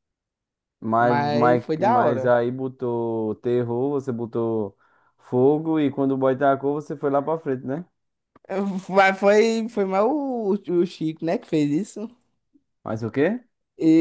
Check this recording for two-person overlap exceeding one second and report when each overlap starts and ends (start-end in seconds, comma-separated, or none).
1.0-2.3